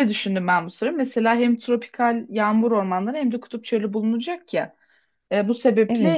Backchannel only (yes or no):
yes